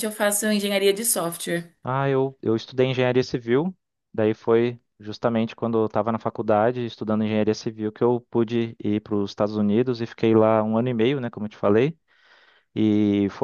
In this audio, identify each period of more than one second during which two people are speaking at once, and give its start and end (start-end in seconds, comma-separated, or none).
none